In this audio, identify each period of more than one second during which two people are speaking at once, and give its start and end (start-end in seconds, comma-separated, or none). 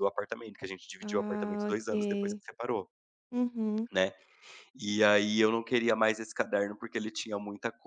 1.0-2.4